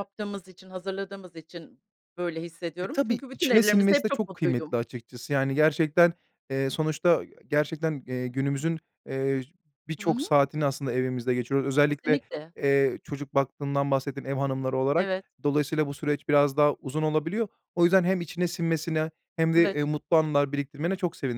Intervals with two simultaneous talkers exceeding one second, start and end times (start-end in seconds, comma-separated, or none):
2.8-4.8